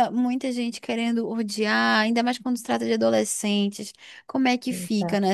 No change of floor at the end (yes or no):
yes